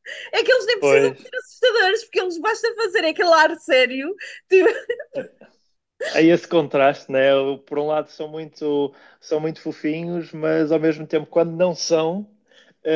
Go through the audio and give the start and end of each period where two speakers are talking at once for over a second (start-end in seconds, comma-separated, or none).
none